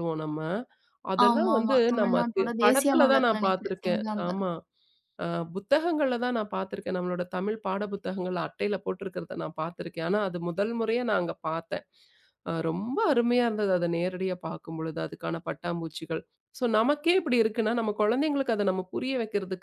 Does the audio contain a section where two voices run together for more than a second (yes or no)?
yes